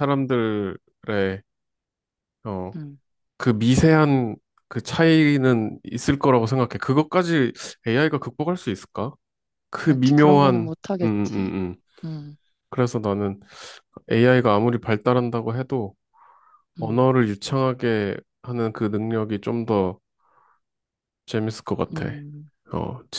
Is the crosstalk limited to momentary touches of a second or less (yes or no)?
no